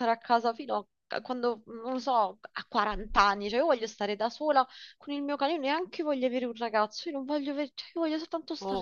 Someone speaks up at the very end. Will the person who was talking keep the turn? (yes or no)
no